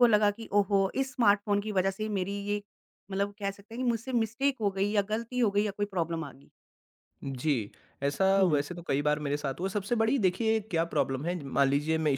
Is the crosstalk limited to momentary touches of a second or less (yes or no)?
yes